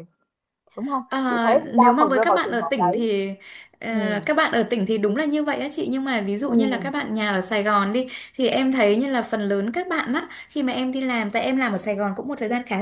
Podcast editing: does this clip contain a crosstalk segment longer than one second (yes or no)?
yes